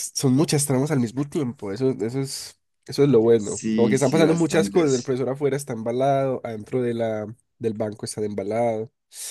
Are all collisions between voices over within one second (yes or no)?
no